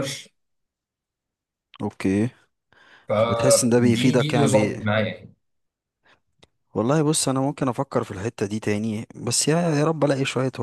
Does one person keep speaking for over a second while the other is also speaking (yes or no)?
yes